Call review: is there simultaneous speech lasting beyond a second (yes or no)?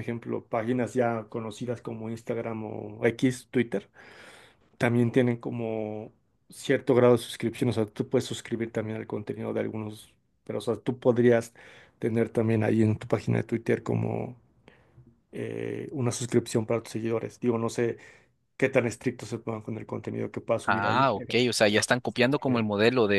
yes